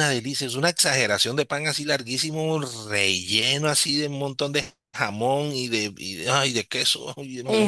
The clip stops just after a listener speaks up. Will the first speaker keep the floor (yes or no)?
no